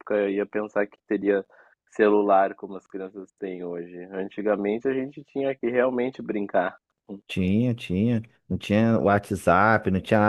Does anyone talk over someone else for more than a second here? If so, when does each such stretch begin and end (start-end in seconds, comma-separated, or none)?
none